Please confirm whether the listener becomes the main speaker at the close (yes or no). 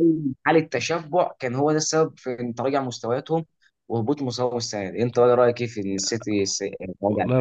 yes